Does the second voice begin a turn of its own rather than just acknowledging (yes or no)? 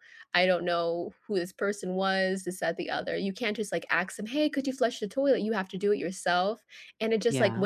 no